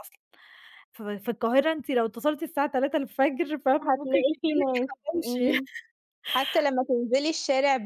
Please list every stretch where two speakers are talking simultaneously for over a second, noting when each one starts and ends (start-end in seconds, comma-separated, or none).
3.8-5.6